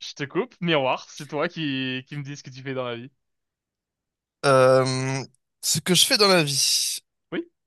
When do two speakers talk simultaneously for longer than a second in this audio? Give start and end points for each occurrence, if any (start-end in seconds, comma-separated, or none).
none